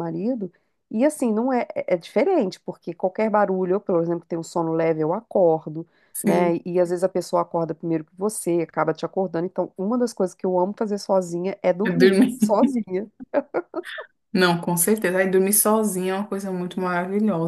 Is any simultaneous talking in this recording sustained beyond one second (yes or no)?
no